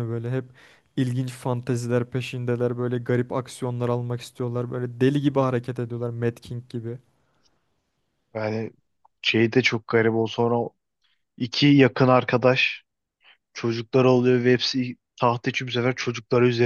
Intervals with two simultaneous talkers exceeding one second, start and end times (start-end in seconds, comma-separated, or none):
none